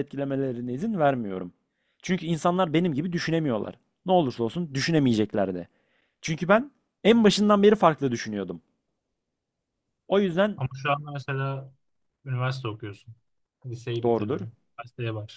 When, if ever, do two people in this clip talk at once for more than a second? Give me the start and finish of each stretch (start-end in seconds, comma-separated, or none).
none